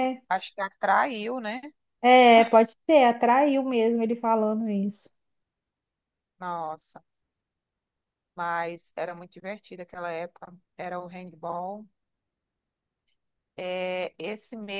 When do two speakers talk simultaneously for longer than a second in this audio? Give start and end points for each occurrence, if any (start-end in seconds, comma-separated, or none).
none